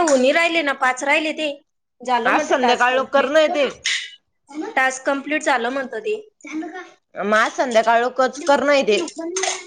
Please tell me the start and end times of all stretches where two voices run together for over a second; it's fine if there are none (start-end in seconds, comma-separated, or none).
2.3-3.6